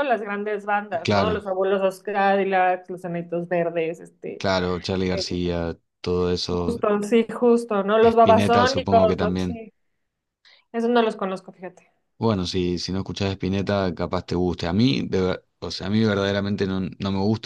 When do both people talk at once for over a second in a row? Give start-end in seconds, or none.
8.1-9.6